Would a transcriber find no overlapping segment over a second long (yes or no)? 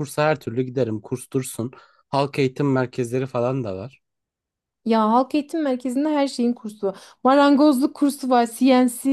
yes